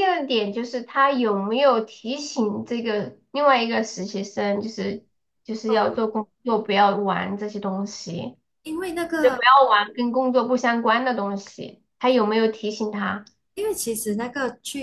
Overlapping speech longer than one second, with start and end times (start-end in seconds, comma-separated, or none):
none